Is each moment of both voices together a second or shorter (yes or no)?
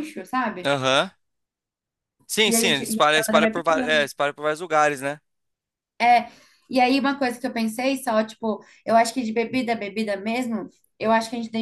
no